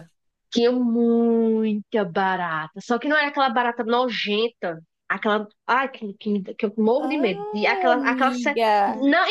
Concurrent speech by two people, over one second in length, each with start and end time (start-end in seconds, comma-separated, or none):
7.1-8.7